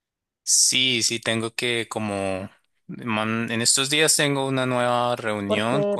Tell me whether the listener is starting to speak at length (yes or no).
yes